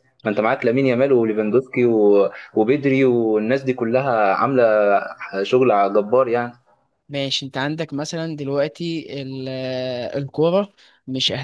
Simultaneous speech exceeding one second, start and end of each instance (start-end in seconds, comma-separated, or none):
none